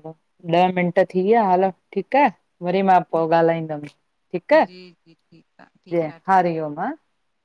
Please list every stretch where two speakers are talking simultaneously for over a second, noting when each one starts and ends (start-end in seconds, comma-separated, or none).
4.7-6.9